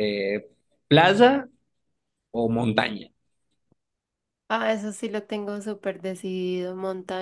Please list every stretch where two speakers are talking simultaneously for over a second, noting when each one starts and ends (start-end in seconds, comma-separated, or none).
none